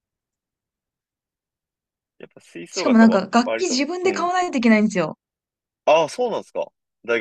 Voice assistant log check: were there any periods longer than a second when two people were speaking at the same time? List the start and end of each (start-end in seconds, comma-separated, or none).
2.7-4.3